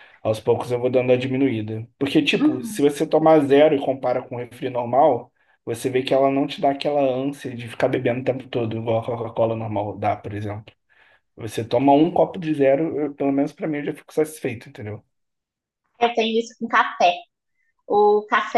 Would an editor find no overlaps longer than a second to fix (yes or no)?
yes